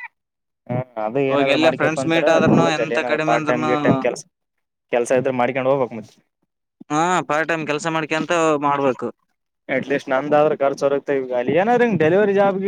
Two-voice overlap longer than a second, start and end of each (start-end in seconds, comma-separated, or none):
1.3-3.7